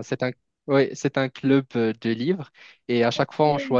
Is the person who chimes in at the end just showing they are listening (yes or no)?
yes